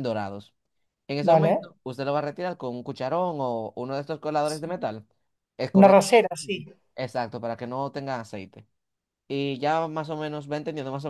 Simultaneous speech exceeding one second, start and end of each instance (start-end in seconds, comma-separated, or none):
none